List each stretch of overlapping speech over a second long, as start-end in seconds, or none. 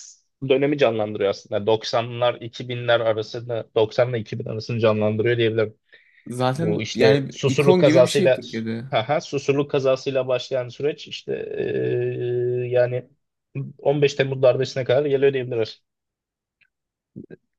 6.5-8.4